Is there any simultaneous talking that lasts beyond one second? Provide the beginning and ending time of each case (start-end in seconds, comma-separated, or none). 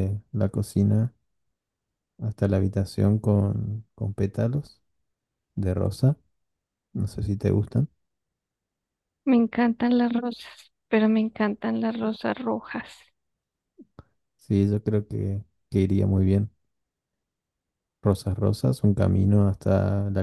none